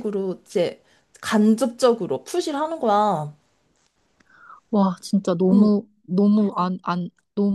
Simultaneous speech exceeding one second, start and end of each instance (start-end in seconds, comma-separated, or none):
none